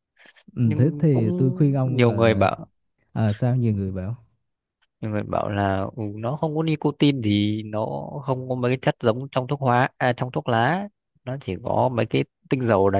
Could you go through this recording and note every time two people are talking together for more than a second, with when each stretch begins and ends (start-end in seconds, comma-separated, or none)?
0.6-2.5